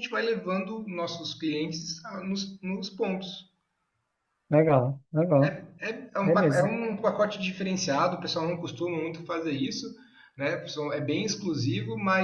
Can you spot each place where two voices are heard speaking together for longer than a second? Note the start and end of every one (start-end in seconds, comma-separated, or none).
none